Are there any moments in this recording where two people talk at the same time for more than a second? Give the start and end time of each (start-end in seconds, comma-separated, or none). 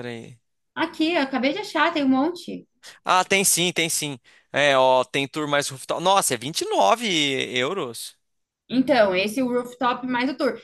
none